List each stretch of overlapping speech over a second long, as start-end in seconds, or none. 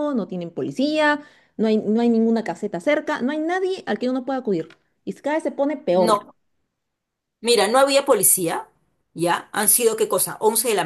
none